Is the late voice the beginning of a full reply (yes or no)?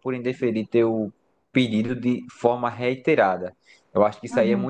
no